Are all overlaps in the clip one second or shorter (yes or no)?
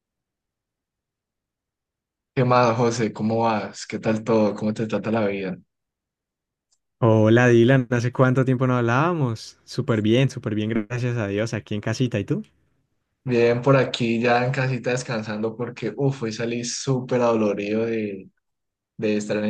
yes